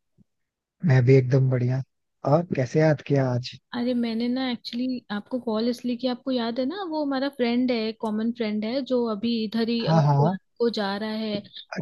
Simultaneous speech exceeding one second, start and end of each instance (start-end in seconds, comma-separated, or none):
none